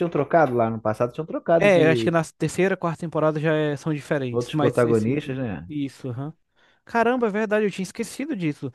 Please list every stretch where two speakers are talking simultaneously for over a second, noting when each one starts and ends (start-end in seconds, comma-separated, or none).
4.3-5.7